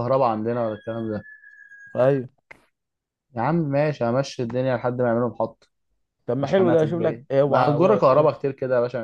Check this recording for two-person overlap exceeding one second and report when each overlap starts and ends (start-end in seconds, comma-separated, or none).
6.4-8.3